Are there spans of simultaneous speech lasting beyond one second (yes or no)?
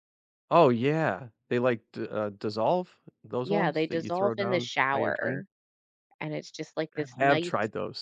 yes